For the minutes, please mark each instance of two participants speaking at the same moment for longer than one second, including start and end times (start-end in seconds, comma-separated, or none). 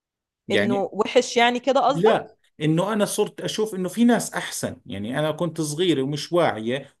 none